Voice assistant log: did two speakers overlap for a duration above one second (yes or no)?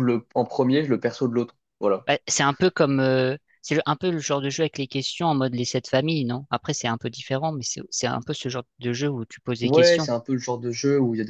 no